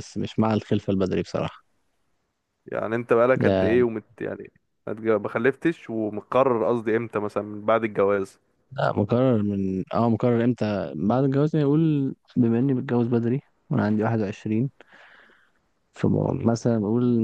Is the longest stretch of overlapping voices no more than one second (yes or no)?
yes